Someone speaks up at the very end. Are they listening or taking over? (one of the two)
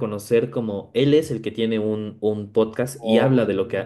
listening